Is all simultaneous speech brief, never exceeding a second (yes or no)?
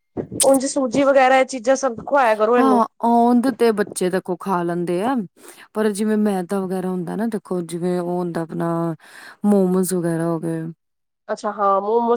yes